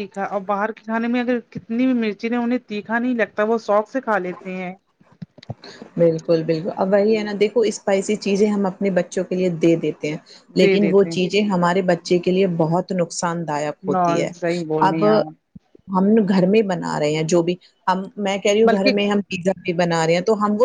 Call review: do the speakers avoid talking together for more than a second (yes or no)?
yes